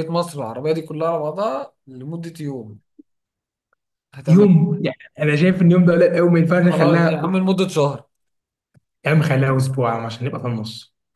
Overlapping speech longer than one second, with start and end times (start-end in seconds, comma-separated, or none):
none